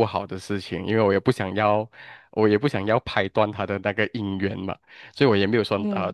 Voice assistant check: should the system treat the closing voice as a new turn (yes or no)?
no